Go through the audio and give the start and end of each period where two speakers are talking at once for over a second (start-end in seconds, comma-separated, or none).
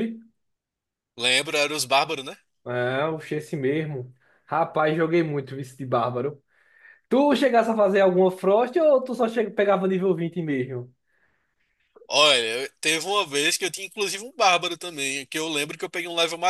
none